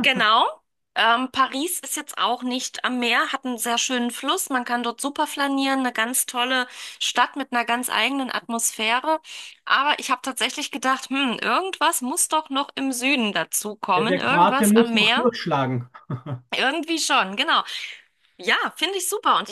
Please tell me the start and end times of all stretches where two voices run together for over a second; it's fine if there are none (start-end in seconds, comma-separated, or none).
13.9-15.2